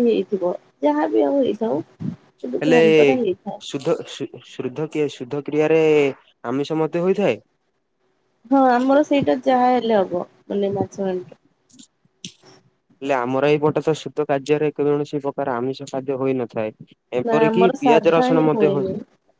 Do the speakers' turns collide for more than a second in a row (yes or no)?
yes